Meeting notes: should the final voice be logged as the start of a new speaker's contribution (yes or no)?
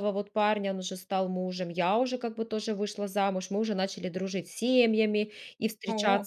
no